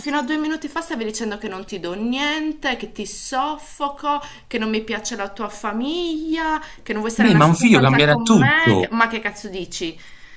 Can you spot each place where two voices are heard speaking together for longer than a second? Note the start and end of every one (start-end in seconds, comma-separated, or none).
7.2-8.9